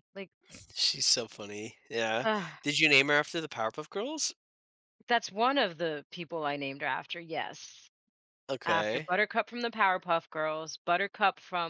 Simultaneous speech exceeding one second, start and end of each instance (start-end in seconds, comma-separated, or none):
none